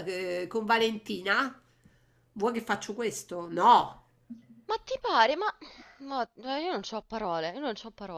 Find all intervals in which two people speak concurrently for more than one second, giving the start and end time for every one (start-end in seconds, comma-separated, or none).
none